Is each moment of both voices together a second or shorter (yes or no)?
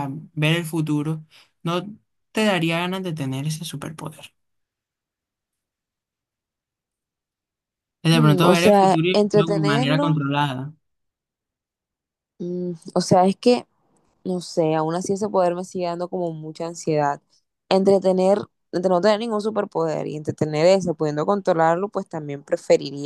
no